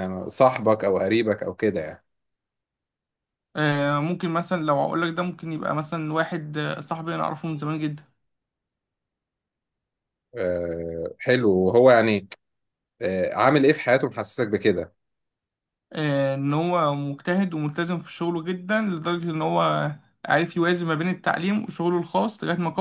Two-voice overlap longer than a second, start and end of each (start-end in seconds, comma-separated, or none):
none